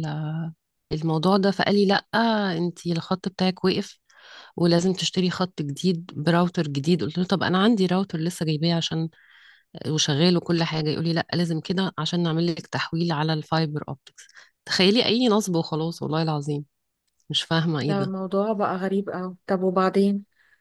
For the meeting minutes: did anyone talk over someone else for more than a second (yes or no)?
no